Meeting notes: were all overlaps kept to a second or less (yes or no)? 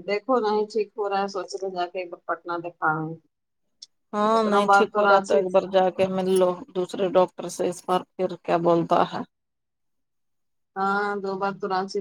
yes